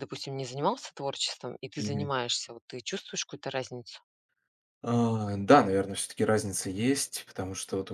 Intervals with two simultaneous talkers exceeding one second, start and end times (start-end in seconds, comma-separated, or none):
none